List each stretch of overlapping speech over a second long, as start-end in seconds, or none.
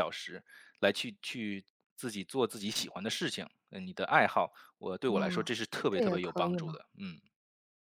5.1-6.8